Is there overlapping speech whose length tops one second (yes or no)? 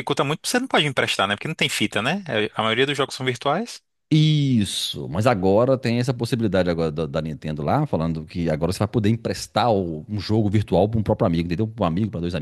no